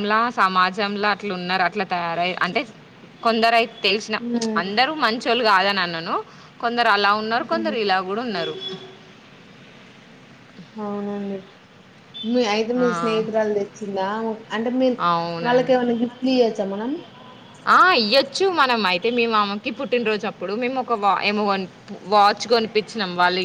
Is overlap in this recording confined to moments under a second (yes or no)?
yes